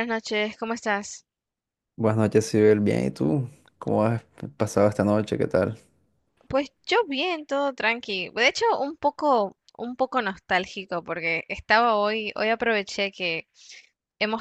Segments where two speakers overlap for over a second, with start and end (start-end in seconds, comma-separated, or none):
none